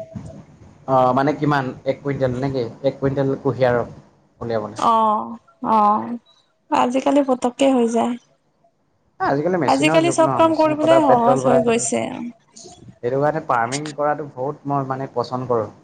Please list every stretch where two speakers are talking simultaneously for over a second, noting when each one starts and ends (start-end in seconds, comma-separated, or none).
9.7-11.8